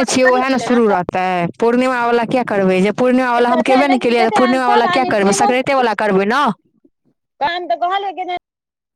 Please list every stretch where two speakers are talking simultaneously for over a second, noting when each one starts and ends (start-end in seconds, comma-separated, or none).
3.5-5.1